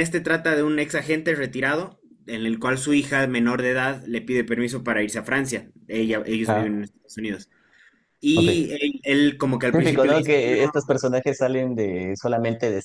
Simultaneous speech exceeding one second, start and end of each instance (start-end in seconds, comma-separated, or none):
9.7-10.9